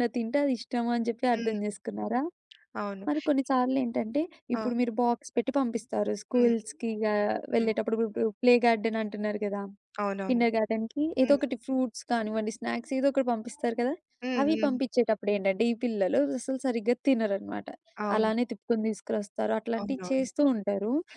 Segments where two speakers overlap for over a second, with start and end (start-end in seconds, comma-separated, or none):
none